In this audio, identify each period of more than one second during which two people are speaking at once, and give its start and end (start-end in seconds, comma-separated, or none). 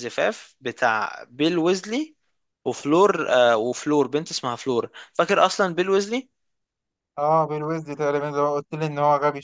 none